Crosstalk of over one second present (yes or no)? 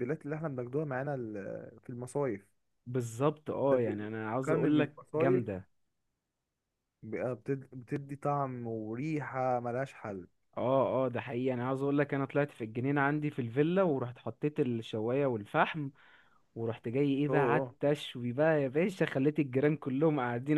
yes